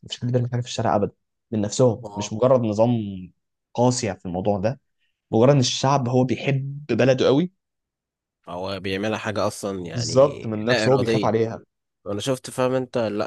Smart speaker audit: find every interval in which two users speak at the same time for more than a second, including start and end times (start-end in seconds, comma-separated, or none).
9.9-11.3